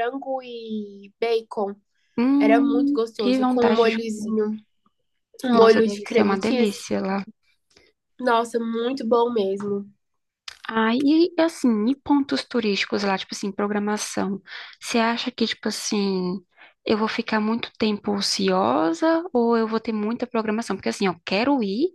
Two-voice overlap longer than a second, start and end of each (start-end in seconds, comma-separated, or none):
2.4-4.0, 5.5-6.8